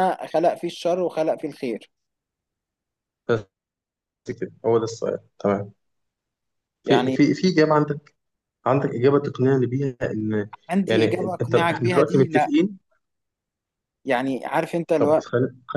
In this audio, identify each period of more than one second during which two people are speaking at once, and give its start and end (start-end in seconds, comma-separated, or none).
10.9-12.5